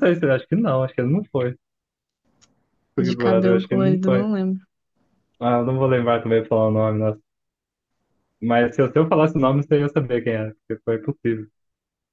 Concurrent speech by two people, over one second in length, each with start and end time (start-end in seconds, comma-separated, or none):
3.0-4.3